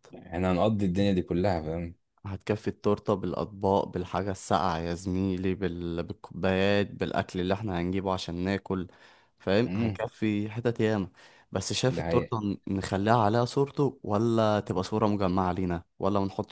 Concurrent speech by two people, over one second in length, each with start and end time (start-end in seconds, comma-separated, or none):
none